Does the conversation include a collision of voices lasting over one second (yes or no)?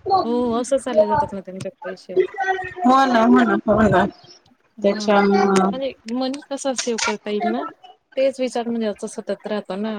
no